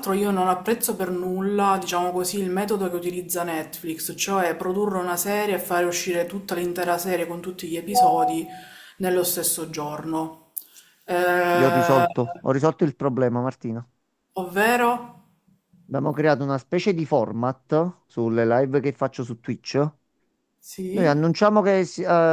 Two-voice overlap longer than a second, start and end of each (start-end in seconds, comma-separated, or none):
none